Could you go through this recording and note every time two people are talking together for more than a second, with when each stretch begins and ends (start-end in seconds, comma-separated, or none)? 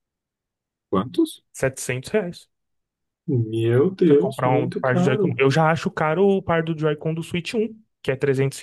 4.0-5.4